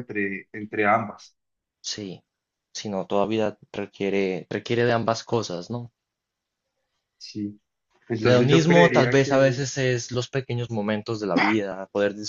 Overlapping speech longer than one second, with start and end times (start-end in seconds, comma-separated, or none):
8.2-9.6